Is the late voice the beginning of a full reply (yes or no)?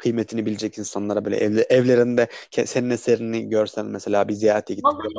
yes